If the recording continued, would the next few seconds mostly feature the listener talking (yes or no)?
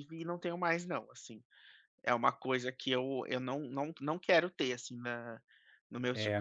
yes